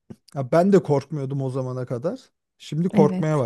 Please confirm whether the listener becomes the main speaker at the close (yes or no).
yes